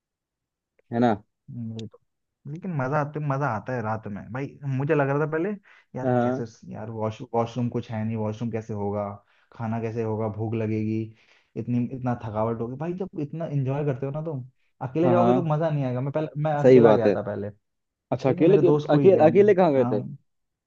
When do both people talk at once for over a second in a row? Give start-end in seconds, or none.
18.1-20.0